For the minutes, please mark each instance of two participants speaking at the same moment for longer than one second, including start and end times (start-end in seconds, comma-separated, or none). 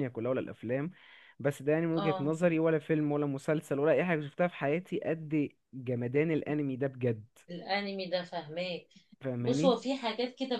none